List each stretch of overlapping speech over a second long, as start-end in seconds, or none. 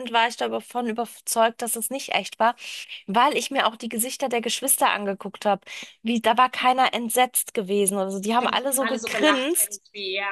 8.3-9.8